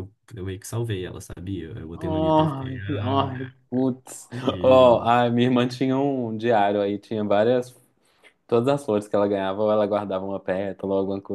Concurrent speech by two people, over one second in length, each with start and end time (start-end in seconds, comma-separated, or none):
2.0-3.5